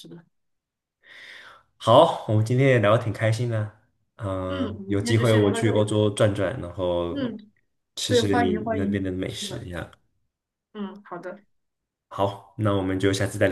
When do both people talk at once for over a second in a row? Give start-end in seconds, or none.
4.5-5.9, 8.1-9.7